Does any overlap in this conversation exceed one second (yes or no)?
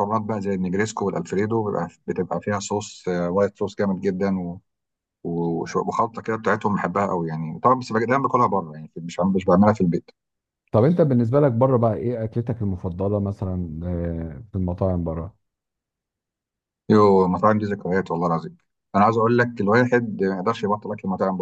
no